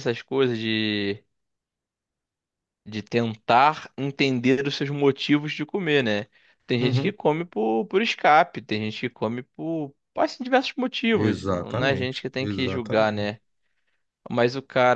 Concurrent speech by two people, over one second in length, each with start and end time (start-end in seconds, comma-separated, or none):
11.1-13.3